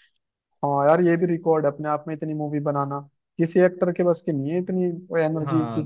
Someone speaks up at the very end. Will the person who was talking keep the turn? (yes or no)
no